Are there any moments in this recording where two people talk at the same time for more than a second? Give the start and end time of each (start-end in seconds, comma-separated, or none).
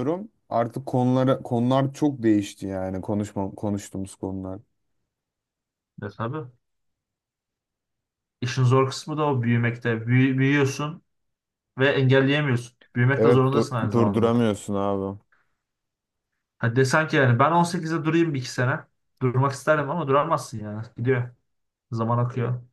13.2-14.4